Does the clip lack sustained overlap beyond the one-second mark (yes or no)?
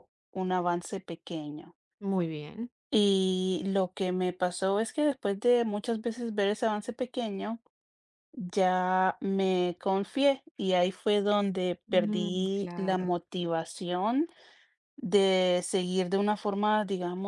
no